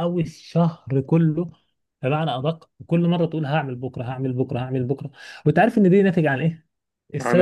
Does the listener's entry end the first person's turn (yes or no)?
no